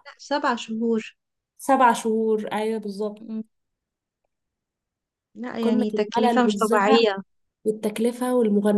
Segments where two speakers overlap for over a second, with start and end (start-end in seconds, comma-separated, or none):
5.6-7.0